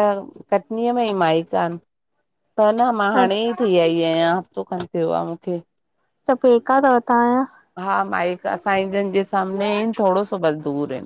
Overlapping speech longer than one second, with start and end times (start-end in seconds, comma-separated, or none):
none